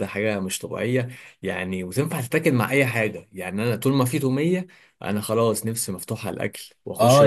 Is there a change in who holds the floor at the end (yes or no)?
yes